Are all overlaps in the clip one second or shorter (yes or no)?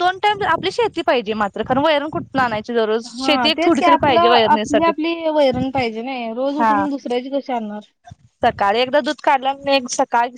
no